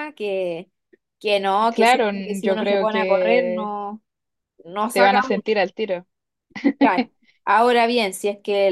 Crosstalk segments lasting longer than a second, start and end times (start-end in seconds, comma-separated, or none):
1.7-3.7